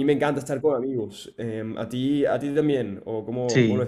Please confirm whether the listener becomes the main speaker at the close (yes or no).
yes